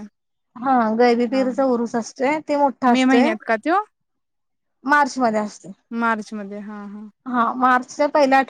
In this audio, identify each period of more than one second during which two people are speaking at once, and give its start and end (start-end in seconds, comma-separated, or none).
none